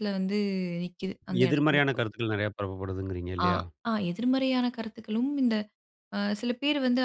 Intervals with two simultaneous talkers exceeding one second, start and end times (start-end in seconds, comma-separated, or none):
none